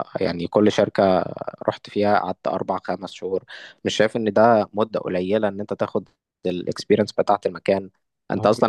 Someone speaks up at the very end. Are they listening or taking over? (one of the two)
listening